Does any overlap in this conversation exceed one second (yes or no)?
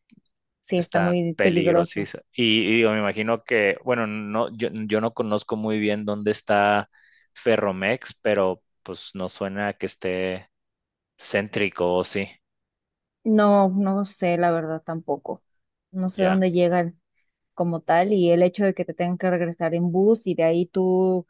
yes